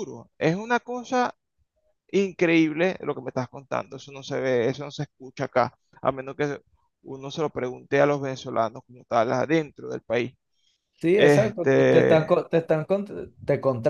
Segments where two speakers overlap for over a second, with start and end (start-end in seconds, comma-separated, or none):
11.1-12.3